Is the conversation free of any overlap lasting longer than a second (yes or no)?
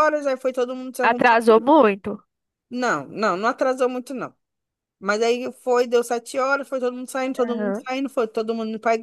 yes